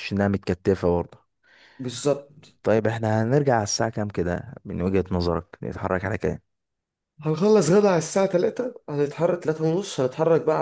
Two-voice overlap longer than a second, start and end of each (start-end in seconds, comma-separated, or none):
none